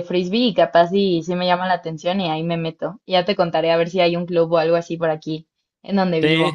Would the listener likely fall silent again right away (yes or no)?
no